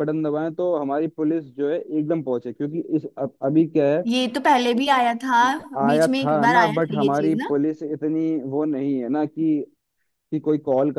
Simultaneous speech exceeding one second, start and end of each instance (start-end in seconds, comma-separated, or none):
5.9-7.5